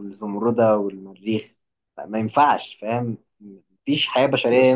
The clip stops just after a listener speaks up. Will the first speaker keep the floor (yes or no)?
no